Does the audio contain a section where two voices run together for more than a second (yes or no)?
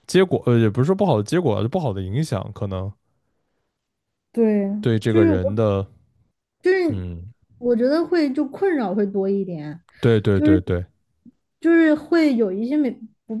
no